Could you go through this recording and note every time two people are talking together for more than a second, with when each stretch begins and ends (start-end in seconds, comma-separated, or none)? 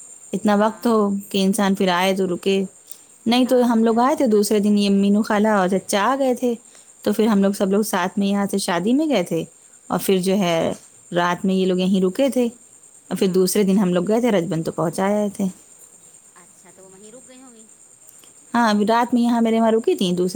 3.4-5.0